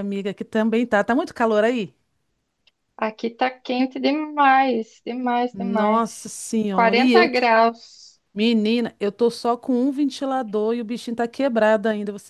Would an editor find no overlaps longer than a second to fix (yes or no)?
no